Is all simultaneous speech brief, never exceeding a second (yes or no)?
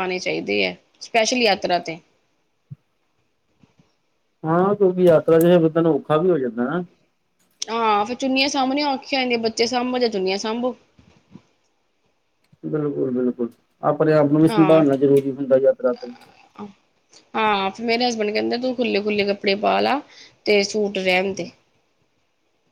yes